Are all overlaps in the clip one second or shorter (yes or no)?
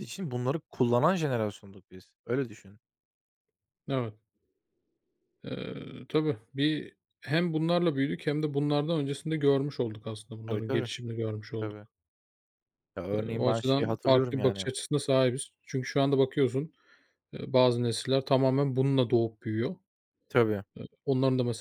no